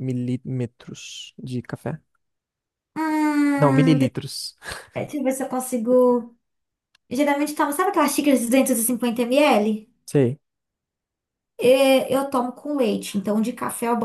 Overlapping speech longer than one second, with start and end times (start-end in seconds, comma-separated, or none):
none